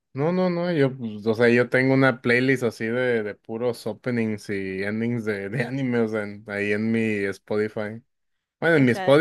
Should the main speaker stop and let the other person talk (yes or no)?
no